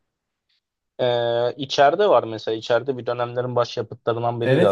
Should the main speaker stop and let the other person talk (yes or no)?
yes